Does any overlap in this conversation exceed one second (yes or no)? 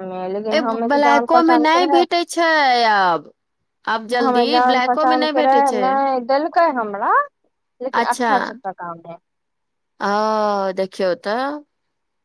no